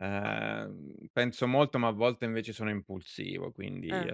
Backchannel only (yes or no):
yes